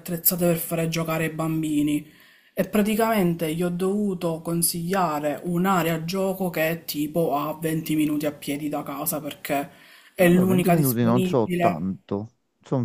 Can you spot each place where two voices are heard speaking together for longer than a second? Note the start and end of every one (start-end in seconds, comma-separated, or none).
10.2-11.9